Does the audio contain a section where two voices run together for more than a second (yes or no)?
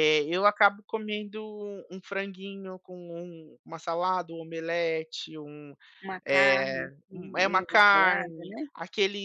yes